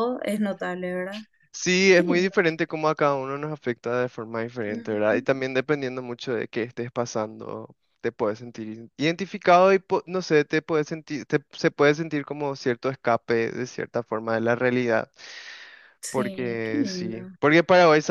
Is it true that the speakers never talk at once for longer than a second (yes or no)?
no